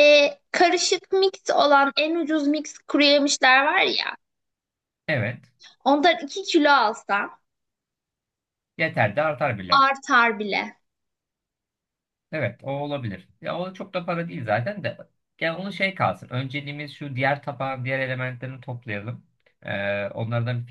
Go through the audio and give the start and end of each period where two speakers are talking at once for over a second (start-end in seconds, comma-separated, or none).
none